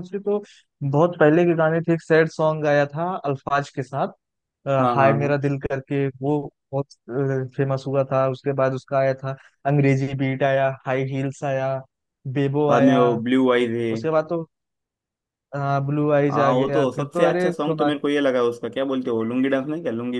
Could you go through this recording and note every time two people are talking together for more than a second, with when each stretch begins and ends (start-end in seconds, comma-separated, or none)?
16.3-17.9